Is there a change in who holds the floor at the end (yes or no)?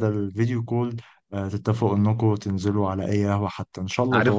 yes